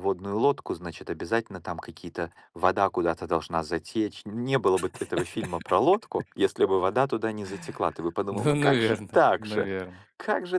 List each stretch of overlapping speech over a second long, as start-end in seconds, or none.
8.3-9.7